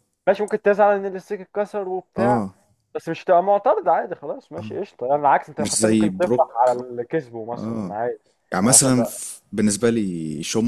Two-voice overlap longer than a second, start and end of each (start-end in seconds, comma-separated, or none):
5.6-6.8